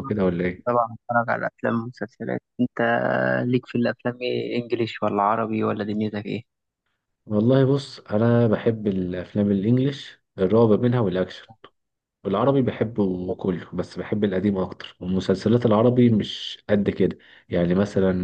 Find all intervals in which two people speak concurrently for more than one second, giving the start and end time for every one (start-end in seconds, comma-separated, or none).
none